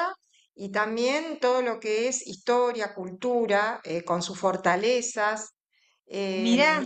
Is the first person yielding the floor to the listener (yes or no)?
no